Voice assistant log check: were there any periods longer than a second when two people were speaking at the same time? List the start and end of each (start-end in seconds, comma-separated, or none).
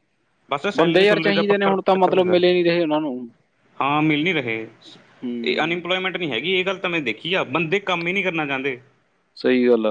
0.8-2.4